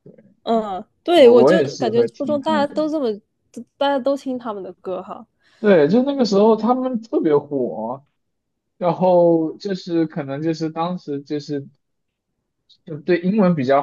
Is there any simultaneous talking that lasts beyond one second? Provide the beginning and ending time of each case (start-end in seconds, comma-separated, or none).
1.1-2.7